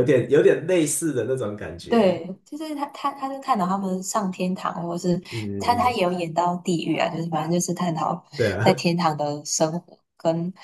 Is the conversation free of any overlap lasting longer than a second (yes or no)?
yes